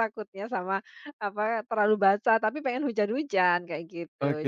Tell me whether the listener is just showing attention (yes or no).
no